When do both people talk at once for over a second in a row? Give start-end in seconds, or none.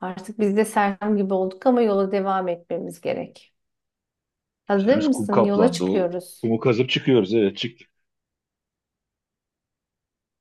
4.8-6.5